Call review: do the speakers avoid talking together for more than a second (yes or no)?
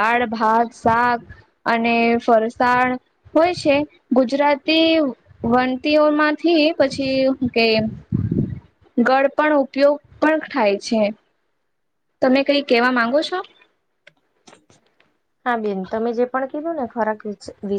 yes